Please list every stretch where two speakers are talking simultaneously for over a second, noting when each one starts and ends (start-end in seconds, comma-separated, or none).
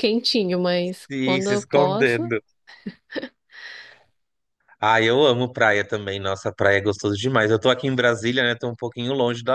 1.1-2.3